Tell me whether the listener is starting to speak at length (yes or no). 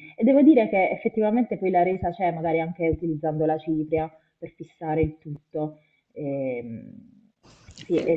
no